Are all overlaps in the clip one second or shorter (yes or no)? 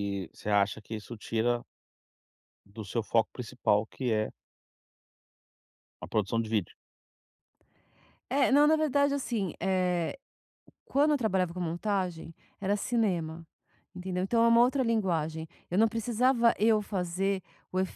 yes